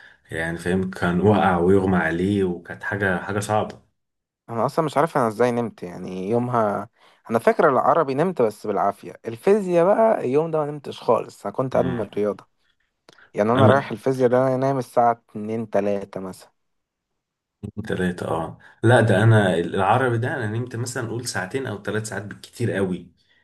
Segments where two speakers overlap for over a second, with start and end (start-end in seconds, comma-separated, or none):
none